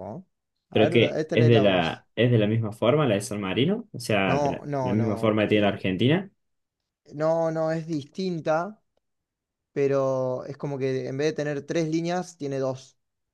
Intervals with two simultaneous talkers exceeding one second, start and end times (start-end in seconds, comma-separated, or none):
0.7-2.0, 4.2-5.8